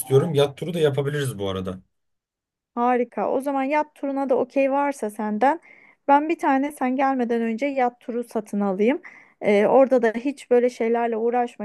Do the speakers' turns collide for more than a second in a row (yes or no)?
no